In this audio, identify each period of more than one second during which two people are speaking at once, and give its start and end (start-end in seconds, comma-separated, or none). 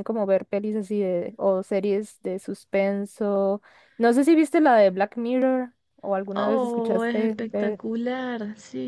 6.3-7.8